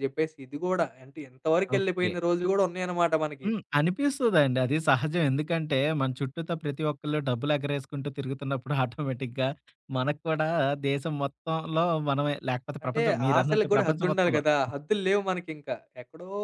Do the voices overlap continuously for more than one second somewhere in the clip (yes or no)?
yes